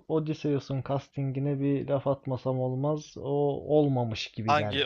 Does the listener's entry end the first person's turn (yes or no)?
yes